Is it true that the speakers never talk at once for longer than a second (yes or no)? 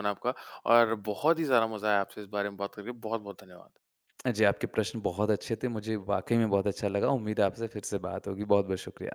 yes